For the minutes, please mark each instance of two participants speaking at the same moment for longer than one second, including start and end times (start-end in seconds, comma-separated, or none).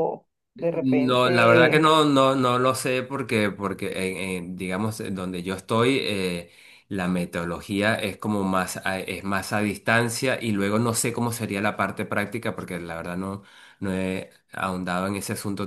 0.6-1.9